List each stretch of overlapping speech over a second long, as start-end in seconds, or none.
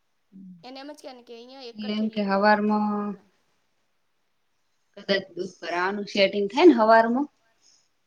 1.6-3.1